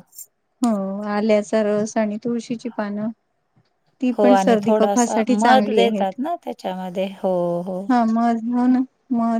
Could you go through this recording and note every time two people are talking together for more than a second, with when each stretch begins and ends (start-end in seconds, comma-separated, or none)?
4.2-6.1